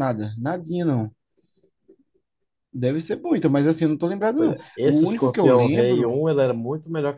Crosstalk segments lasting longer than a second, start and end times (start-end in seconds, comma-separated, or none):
4.4-6.1